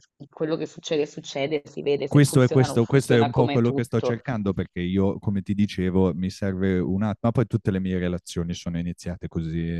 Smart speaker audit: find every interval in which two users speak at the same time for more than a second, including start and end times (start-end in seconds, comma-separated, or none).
2.1-4.2